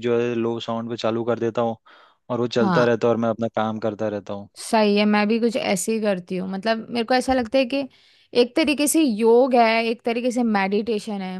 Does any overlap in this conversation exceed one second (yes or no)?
no